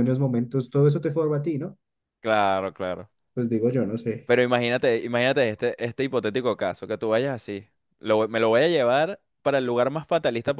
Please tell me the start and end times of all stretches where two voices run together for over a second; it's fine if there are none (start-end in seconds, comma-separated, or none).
none